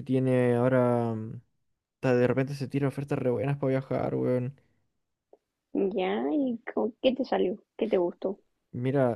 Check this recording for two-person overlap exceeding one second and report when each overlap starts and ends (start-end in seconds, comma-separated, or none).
none